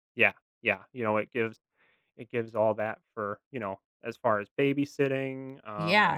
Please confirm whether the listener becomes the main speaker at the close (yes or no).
yes